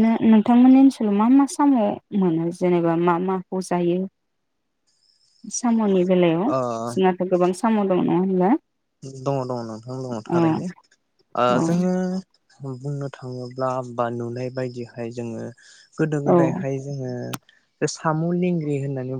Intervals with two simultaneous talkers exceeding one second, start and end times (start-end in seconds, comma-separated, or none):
none